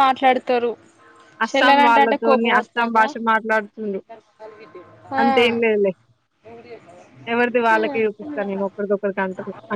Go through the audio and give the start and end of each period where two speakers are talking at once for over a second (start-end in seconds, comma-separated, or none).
1.5-3.1